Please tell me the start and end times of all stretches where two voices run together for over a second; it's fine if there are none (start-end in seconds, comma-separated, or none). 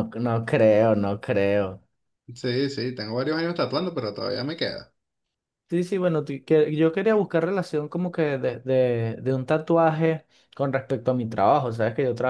none